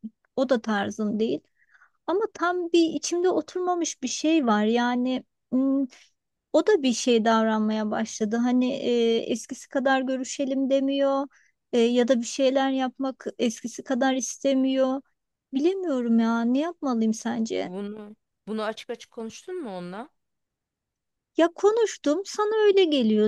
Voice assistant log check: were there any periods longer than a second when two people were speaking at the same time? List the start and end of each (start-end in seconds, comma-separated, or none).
none